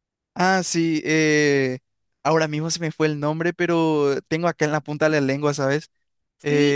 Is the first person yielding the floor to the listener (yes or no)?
yes